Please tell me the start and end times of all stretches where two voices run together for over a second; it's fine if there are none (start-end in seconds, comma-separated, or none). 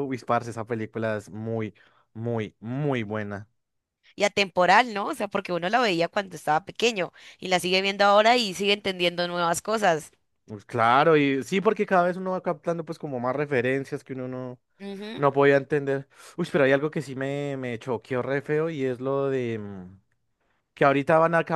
none